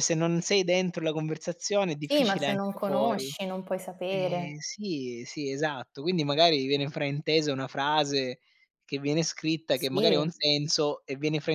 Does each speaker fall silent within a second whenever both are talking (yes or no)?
no